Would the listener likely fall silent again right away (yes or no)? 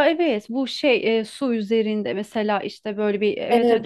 no